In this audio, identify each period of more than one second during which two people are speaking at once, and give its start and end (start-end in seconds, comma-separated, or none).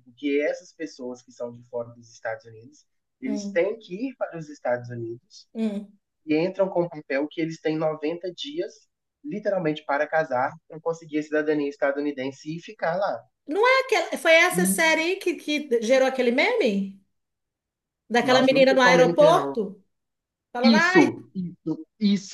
18.2-19.6